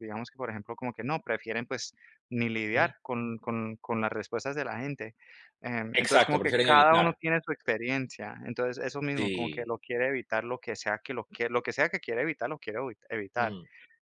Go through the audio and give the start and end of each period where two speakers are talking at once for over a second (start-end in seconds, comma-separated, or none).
5.9-7.2